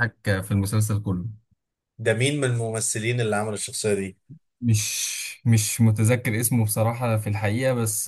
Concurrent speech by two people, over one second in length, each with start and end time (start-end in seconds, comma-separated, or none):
none